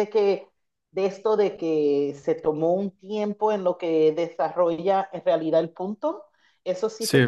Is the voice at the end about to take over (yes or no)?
no